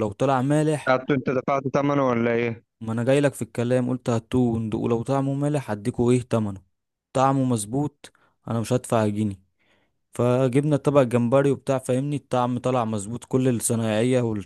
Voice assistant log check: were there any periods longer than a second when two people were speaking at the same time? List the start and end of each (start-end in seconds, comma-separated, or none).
none